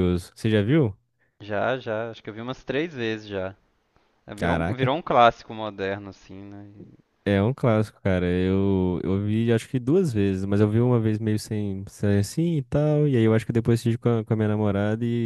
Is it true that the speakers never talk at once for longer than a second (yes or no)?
yes